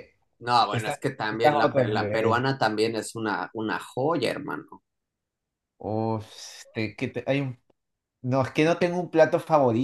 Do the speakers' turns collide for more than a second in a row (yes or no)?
yes